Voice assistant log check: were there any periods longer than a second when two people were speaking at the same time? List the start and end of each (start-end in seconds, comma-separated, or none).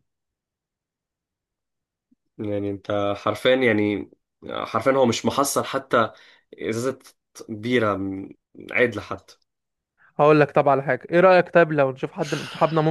none